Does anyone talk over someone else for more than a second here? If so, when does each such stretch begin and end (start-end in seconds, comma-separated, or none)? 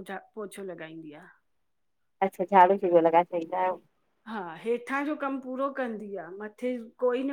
none